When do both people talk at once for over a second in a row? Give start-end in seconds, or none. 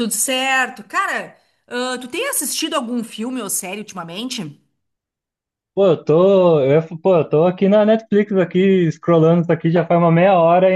none